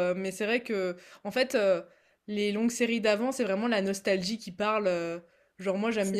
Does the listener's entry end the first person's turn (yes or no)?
no